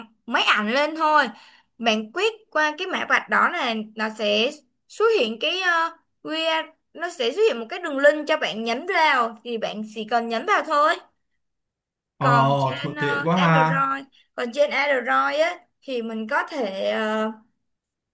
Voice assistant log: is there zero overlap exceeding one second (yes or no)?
no